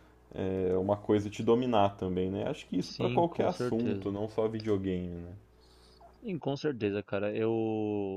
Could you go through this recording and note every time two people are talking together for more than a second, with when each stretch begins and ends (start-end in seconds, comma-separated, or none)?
2.8-4.2